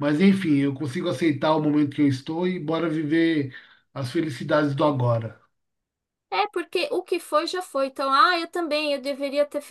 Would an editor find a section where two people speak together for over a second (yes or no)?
no